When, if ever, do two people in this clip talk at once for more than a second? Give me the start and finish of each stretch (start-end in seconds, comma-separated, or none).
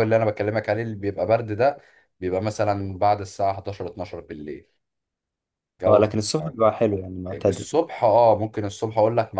none